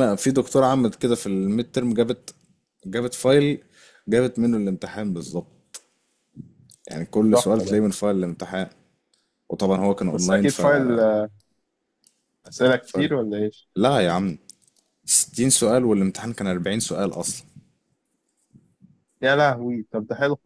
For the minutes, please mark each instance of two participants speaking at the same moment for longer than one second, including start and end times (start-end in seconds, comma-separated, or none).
none